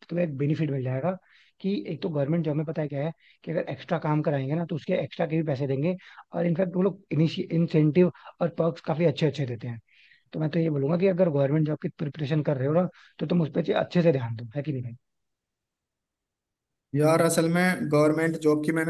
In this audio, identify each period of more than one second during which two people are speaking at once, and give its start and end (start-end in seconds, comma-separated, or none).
none